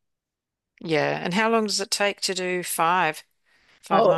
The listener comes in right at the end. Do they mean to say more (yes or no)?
yes